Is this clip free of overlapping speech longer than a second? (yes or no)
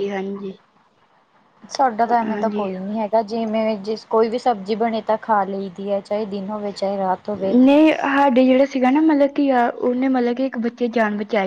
yes